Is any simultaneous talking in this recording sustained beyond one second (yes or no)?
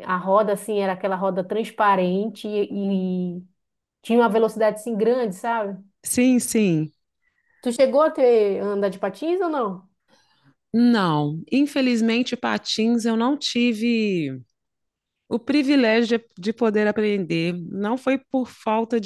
no